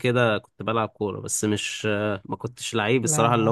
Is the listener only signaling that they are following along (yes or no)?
yes